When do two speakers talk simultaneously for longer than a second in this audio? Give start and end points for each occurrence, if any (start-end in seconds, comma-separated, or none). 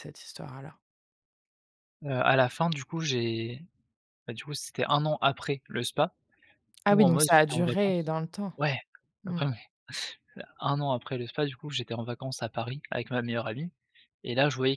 6.9-8.1